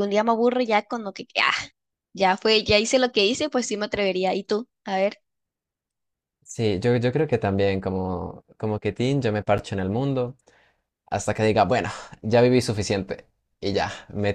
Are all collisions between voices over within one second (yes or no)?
yes